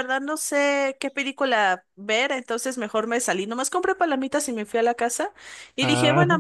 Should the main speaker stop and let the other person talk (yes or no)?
no